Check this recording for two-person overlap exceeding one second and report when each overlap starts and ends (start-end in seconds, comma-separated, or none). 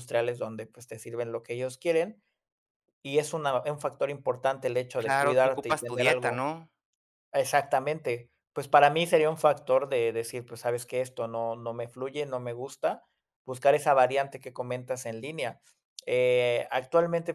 5.0-6.4